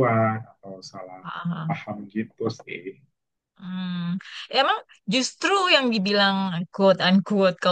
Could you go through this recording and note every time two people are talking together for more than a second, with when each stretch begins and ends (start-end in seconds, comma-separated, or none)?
none